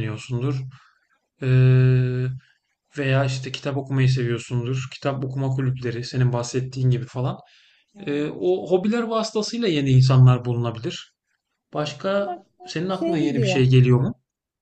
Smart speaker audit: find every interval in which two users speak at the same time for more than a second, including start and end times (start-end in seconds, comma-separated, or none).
11.7-13.7